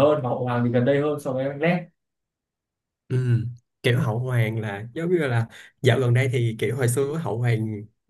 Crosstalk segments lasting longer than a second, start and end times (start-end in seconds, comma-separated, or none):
none